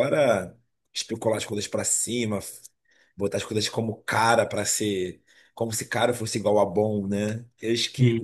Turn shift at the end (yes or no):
no